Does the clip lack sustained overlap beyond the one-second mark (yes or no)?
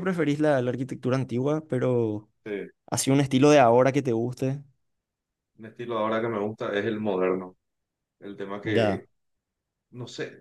yes